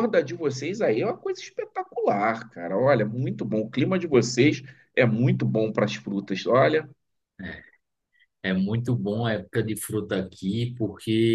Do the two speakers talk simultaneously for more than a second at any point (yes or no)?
no